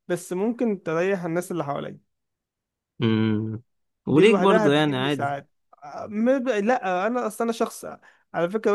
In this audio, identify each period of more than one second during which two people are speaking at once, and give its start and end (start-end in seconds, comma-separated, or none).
4.1-5.3